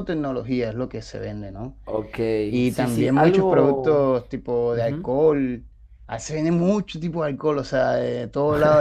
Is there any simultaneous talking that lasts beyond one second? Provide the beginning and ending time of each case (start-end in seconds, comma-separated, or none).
2.7-4.0